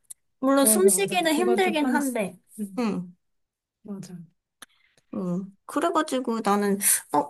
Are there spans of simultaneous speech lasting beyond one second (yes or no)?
yes